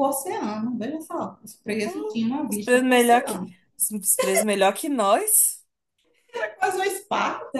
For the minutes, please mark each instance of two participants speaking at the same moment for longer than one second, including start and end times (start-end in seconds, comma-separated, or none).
1.8-3.4